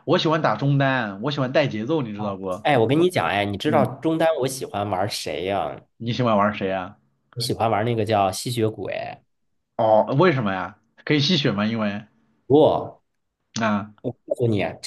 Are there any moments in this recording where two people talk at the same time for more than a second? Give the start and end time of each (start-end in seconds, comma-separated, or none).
none